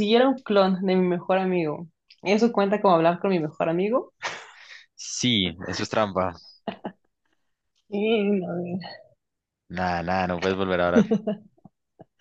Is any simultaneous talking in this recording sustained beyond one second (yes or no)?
no